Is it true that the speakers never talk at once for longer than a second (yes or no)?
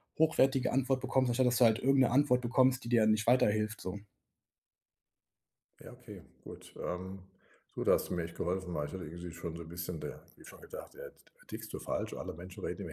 yes